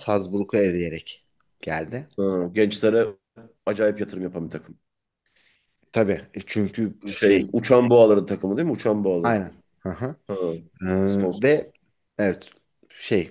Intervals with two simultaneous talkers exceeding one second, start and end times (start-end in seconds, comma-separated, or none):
none